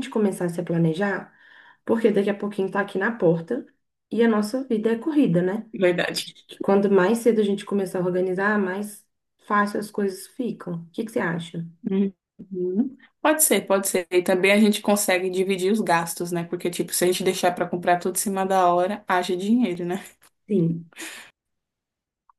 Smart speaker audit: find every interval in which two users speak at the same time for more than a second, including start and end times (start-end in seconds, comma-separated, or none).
none